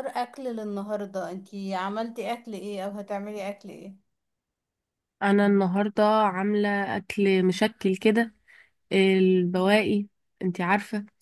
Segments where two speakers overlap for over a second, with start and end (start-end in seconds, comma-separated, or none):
none